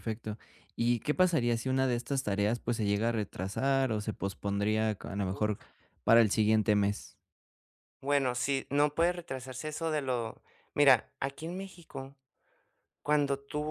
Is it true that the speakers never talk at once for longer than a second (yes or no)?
yes